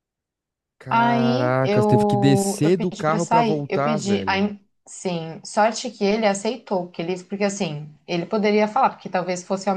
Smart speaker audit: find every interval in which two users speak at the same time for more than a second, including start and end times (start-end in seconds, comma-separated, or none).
0.9-4.5